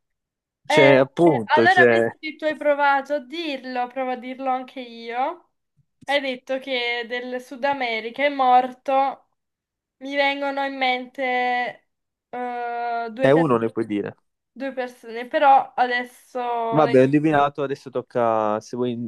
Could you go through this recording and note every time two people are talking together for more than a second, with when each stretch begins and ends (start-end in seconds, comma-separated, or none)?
0.7-2.1